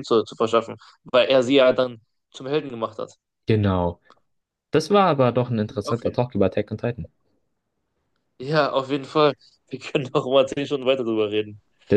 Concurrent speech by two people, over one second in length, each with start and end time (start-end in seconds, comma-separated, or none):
none